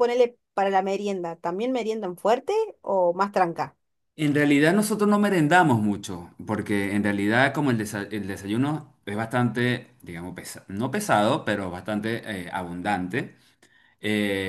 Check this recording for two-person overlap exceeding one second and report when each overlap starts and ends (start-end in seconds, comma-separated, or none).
none